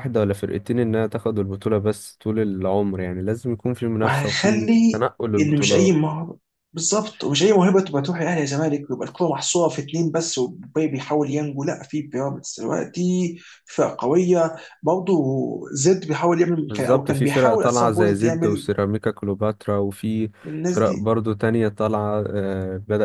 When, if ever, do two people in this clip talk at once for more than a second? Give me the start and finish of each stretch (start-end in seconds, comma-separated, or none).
4.0-6.1, 16.7-18.7